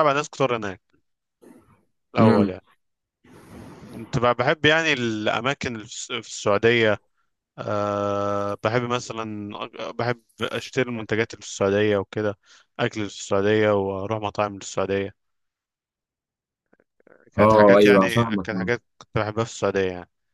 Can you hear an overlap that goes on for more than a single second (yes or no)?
yes